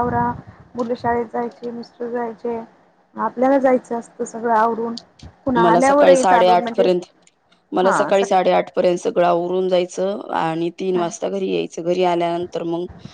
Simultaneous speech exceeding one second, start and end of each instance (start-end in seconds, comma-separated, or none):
5.6-6.9